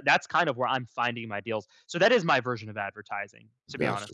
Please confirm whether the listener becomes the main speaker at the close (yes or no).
yes